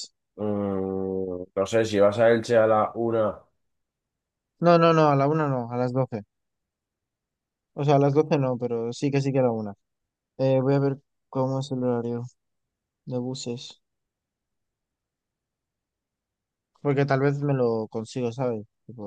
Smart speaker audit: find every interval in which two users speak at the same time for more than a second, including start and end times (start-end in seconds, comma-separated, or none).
none